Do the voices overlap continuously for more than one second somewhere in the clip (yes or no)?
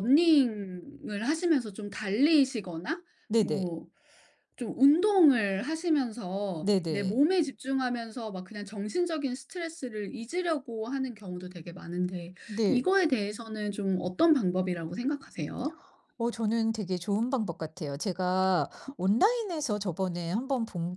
no